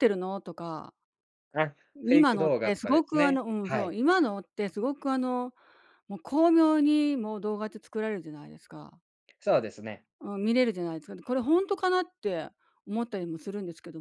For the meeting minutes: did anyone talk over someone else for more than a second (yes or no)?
yes